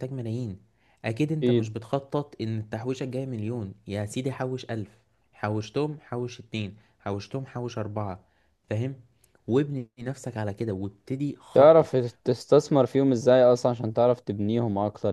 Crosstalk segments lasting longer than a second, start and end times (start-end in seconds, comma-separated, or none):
none